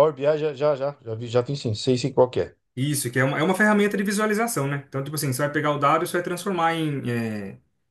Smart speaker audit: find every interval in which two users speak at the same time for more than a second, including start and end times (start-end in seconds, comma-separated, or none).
none